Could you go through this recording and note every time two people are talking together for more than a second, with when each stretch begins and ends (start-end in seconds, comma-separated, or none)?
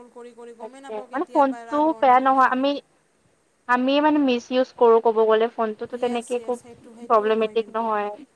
0.6-2.6